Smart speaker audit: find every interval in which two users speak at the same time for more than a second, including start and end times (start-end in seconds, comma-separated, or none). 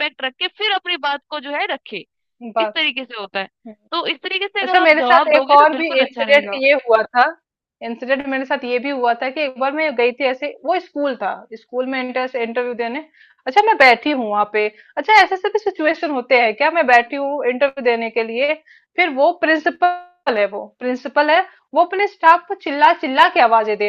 4.6-6.6